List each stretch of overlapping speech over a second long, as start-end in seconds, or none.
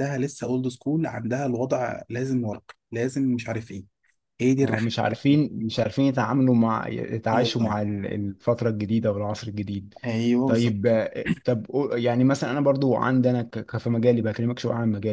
none